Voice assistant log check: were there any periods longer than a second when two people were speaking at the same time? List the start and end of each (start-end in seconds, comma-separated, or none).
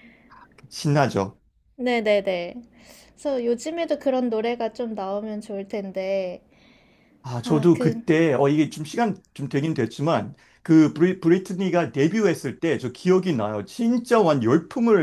none